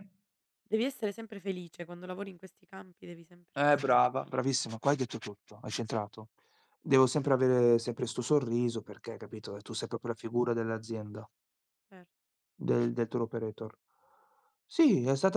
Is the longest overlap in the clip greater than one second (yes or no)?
no